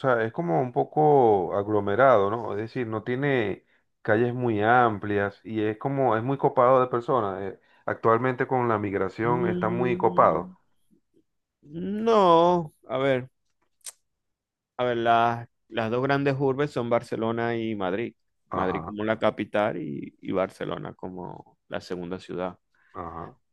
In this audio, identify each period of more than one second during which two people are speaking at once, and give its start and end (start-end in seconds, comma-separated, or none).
9.2-10.5